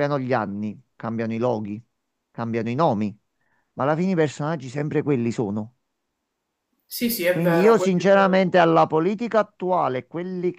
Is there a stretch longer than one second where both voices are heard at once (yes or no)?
yes